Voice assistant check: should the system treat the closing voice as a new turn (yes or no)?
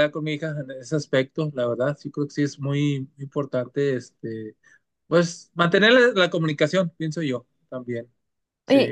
yes